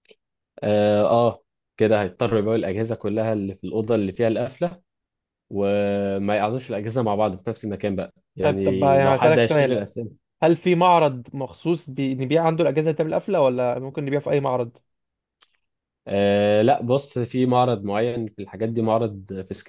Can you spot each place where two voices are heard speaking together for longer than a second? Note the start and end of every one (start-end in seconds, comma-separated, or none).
8.4-9.8